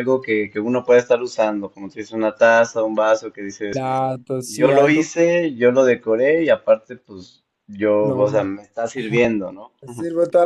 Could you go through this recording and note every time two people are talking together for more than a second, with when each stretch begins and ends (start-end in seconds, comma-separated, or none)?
none